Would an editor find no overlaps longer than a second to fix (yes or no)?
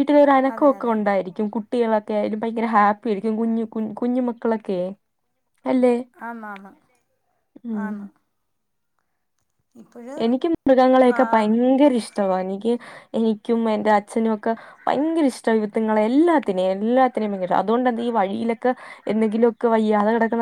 no